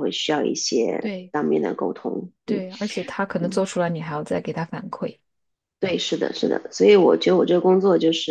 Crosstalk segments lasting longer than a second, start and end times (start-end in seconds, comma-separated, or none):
none